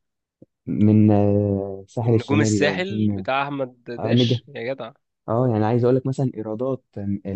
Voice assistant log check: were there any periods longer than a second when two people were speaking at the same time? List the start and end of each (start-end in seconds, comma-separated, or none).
2.0-3.2